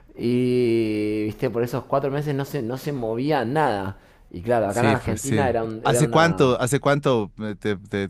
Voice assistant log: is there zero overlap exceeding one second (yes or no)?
no